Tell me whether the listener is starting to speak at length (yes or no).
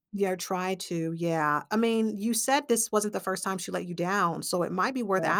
no